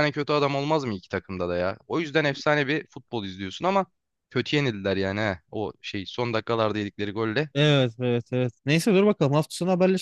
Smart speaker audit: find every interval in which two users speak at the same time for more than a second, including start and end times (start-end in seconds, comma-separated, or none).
none